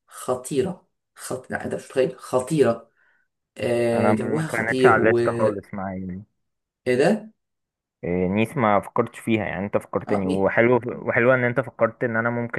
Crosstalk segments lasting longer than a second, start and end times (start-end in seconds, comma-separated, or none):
3.9-5.7